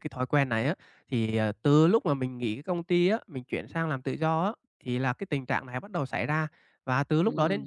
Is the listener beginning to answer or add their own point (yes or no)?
no